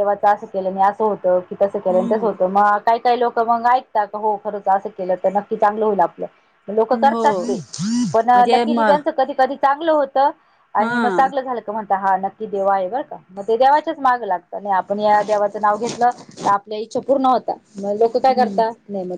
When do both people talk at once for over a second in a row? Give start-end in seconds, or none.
none